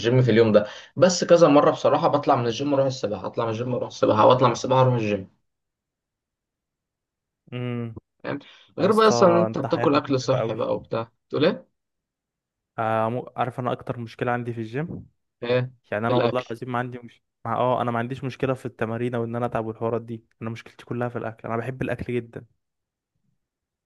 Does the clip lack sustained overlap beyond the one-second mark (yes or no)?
no